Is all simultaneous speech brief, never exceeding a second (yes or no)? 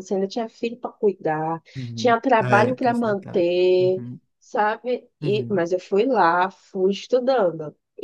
no